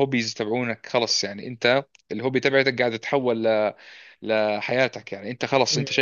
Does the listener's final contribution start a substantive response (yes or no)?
no